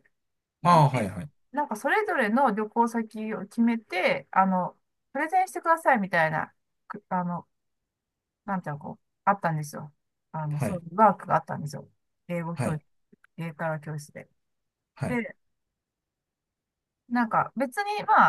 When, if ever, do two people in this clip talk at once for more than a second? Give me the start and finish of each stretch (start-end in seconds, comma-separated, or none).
none